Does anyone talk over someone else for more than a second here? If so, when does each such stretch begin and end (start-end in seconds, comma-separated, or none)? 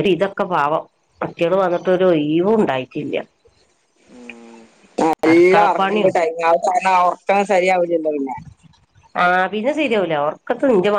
none